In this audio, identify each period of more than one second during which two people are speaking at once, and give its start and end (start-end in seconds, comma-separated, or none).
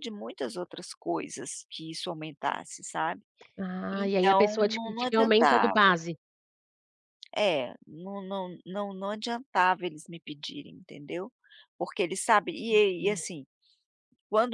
3.9-5.8